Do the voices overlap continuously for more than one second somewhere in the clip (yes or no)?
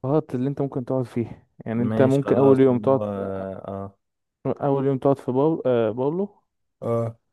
yes